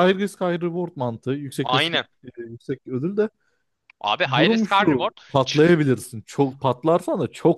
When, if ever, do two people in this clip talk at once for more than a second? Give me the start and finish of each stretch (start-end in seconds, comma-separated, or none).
4.3-5.9